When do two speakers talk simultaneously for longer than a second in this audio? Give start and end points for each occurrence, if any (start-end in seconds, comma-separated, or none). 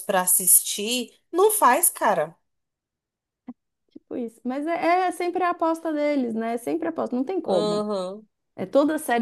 none